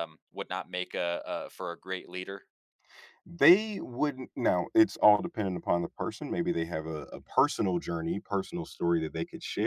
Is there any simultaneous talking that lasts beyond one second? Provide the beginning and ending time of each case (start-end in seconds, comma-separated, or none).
none